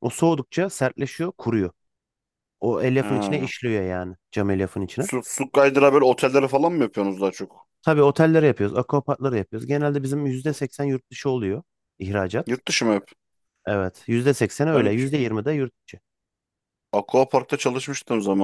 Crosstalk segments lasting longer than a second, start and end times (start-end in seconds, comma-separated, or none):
none